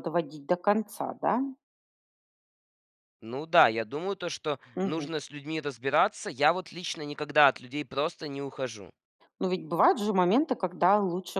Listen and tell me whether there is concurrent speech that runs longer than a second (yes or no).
no